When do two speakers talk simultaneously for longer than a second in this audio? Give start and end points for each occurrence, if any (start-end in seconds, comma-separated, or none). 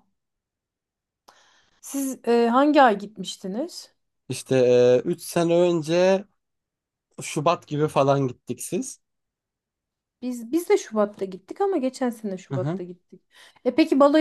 none